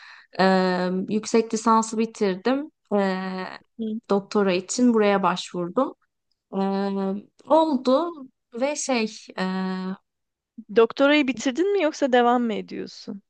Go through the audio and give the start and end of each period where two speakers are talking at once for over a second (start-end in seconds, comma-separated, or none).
none